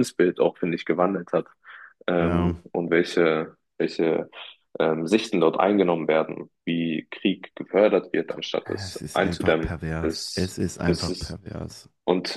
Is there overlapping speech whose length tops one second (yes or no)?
yes